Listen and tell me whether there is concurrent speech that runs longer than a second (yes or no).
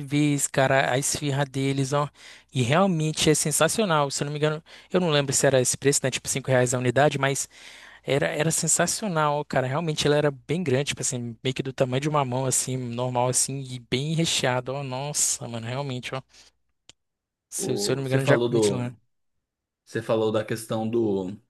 yes